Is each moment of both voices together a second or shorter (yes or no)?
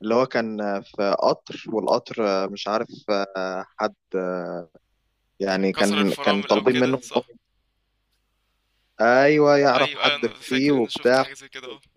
no